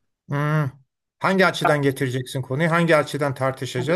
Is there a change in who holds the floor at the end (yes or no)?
yes